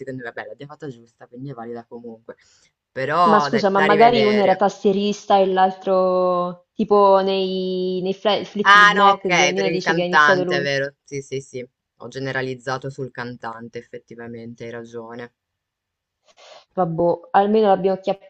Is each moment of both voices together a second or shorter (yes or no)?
no